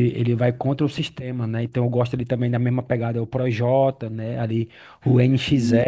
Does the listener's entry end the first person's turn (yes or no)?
no